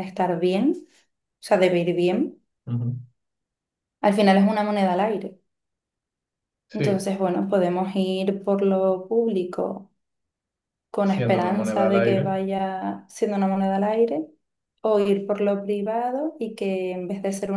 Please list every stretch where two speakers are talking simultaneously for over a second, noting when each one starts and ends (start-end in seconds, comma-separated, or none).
11.0-12.4